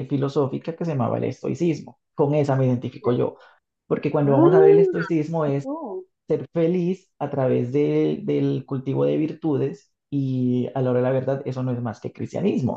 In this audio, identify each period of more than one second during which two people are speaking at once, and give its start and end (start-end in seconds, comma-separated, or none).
4.2-5.7